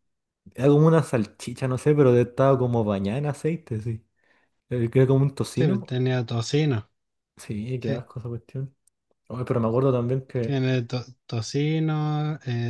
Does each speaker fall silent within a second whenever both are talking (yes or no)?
yes